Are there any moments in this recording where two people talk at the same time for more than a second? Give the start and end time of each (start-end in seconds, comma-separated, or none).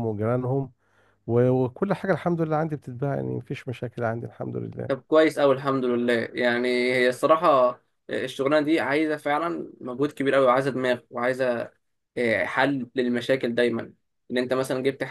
none